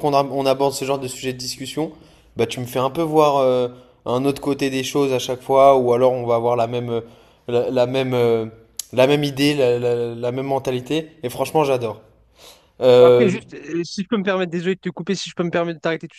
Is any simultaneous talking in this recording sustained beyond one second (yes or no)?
no